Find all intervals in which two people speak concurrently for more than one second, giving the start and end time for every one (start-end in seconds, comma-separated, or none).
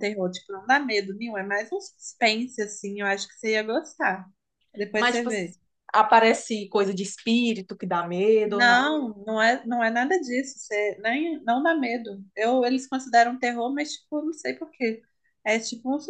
none